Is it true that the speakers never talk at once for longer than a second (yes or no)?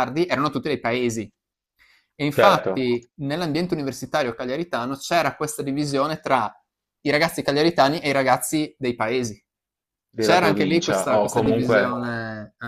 no